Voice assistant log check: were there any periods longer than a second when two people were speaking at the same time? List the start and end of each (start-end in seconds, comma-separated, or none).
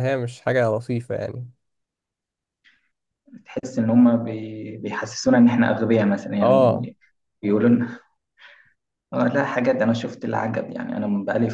none